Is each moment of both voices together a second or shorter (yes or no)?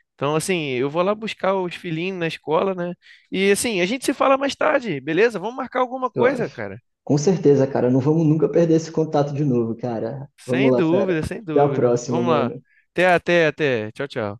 no